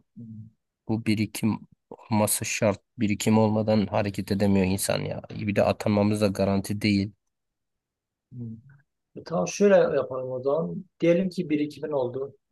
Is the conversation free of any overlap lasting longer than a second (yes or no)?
yes